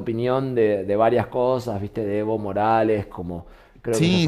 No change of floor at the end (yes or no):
no